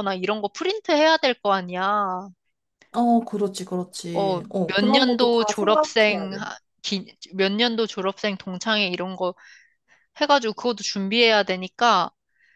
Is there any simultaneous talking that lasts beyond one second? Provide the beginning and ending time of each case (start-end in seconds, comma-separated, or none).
4.1-6.5